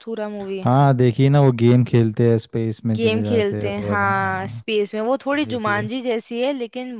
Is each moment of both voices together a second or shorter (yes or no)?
no